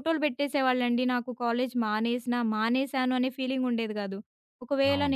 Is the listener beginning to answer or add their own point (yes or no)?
no